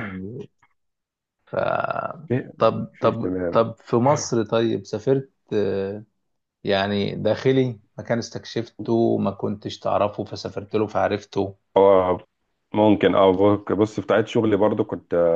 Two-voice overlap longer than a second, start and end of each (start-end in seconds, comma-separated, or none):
none